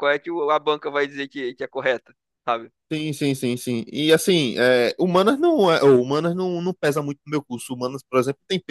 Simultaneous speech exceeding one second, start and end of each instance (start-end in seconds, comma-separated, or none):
none